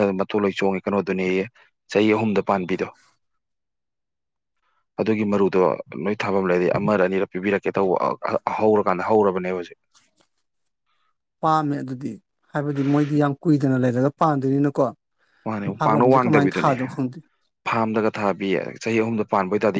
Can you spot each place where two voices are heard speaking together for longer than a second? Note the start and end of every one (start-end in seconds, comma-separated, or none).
none